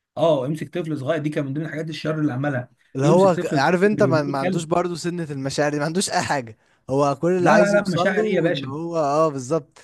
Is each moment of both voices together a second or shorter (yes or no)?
no